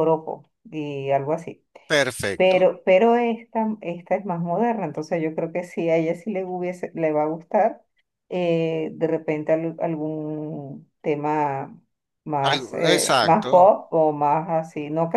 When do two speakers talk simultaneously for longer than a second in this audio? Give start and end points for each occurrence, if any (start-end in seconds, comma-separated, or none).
12.4-13.7